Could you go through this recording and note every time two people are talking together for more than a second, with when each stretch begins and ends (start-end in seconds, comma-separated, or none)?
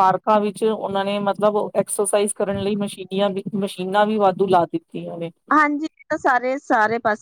none